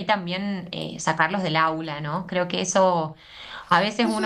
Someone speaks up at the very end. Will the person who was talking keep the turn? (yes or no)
no